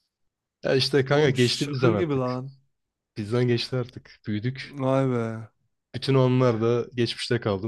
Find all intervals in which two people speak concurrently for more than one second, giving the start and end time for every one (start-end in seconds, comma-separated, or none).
1.1-2.3